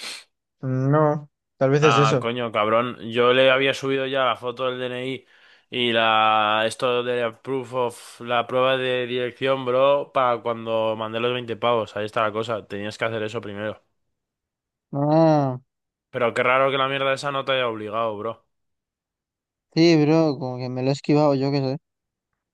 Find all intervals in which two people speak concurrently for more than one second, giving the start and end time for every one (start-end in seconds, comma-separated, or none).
none